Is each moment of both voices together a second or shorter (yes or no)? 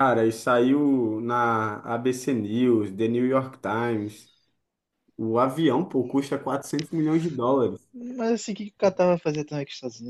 yes